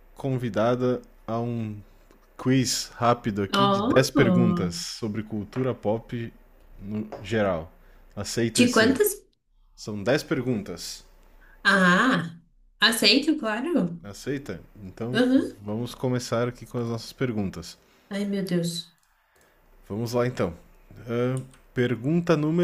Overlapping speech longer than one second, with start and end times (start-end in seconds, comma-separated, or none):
3.5-4.8